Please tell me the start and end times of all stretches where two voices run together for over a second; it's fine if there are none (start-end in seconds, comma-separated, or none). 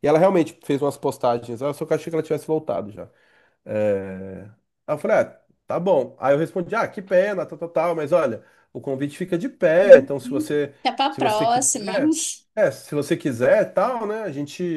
9.8-12.0